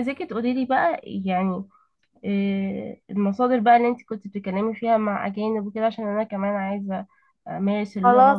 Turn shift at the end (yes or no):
yes